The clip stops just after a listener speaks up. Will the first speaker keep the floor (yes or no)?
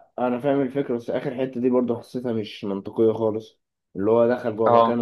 yes